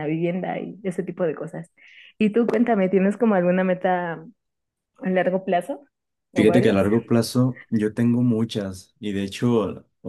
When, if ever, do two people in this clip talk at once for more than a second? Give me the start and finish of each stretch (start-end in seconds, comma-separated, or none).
none